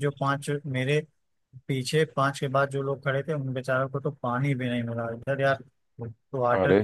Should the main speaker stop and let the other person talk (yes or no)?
no